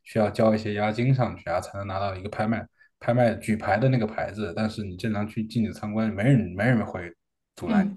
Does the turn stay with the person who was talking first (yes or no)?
no